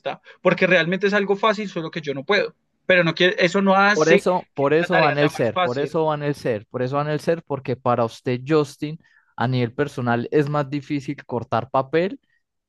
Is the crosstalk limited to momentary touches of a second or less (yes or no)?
no